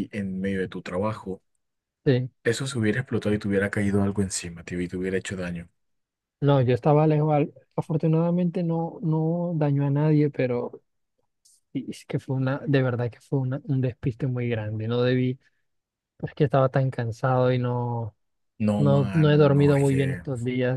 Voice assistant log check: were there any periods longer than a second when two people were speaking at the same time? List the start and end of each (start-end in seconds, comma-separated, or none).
18.8-20.2